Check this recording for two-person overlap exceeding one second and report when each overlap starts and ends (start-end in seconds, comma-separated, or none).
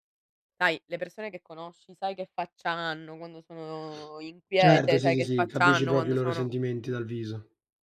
4.6-6.5